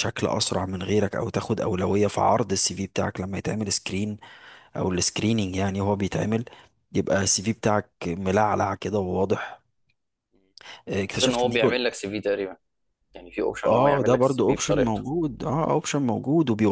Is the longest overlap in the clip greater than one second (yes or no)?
yes